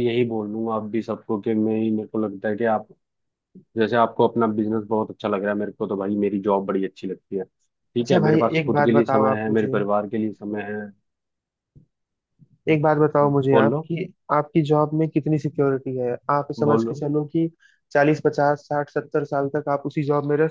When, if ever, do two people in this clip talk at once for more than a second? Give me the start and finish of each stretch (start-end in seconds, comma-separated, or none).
8.0-9.7